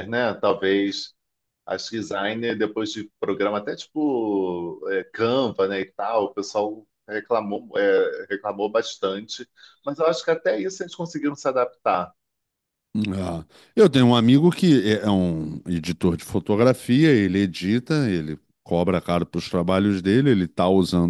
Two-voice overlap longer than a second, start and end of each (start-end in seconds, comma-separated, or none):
none